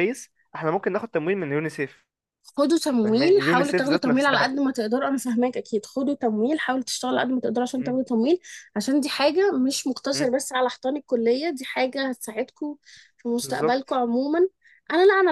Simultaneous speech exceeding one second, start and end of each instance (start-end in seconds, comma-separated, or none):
3.0-4.5